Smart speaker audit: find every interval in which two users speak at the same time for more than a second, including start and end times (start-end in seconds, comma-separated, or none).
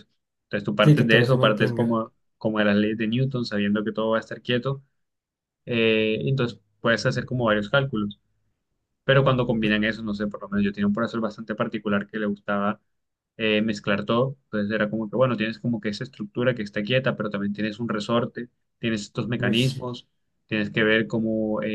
0.8-2.0